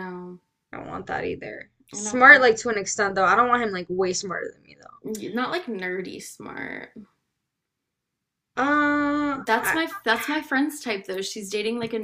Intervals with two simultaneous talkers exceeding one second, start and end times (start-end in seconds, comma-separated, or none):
none